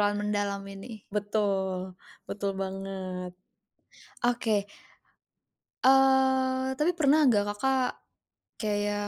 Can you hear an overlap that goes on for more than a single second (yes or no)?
no